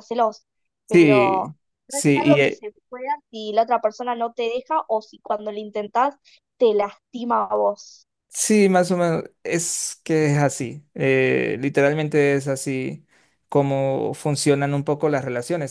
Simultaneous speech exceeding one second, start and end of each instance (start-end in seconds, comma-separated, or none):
0.9-2.6